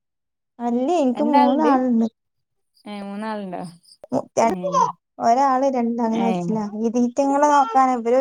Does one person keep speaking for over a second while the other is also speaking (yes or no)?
no